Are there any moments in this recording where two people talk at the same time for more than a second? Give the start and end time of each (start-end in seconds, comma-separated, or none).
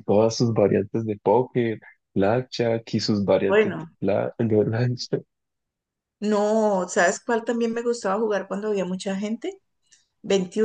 none